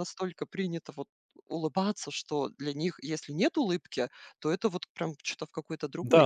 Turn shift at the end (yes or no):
yes